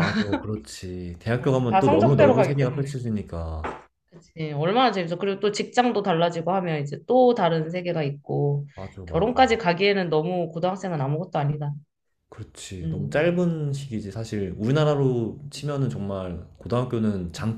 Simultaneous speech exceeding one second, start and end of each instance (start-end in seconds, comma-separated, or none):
1.4-3.0